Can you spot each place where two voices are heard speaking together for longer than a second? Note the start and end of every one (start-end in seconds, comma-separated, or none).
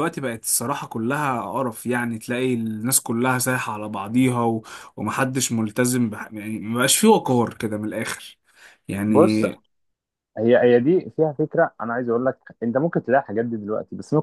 none